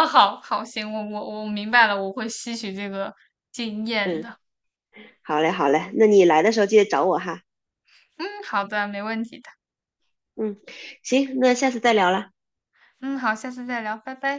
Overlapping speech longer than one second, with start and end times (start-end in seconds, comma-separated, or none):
none